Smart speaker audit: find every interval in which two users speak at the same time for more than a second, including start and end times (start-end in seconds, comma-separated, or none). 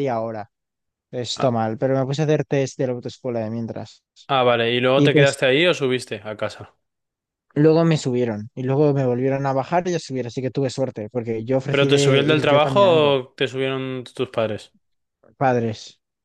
11.7-13.2